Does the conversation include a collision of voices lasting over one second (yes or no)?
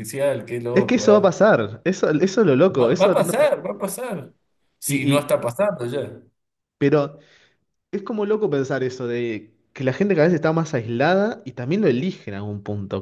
no